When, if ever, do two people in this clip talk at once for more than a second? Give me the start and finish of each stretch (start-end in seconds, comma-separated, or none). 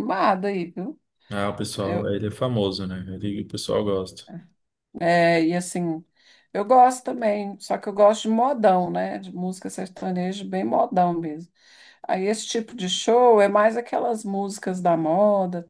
none